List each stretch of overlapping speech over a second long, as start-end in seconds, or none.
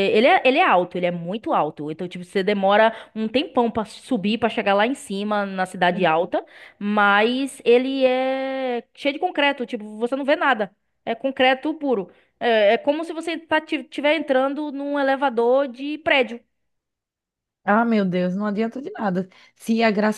none